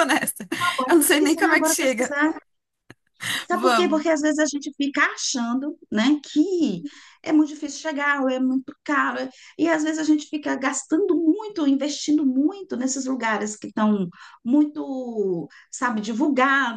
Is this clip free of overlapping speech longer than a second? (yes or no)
no